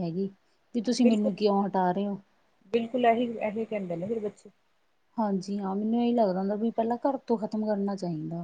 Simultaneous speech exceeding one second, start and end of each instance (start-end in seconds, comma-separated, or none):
none